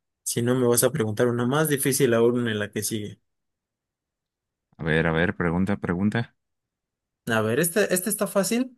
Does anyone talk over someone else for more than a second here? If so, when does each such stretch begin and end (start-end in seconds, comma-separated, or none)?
none